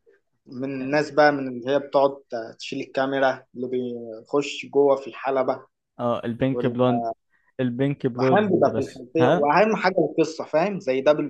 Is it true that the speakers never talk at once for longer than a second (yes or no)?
no